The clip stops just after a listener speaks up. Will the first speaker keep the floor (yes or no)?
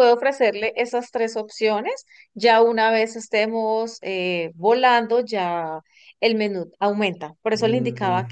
yes